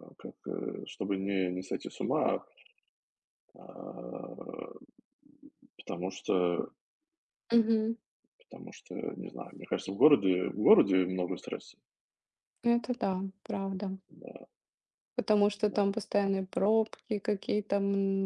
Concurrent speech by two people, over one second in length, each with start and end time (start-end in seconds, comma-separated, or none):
none